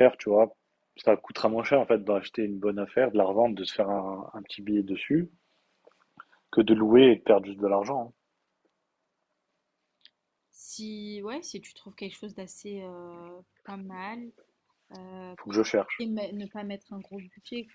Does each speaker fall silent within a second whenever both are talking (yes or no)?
yes